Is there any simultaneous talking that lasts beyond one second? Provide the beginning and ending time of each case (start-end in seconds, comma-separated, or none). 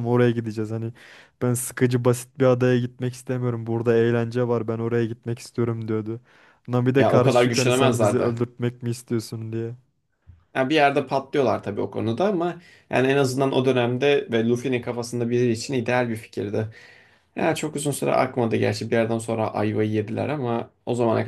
7.0-8.4